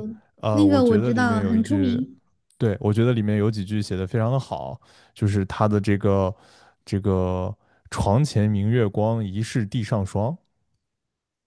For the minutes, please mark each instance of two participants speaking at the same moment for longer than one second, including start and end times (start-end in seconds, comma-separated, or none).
0.5-2.0